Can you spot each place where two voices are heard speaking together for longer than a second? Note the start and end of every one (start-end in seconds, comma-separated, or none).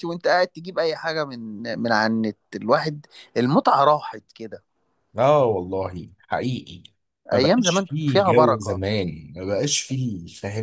7.3-8.8